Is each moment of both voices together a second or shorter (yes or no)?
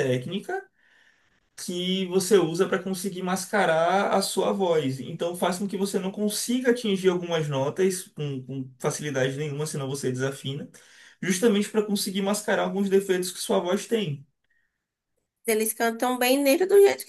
yes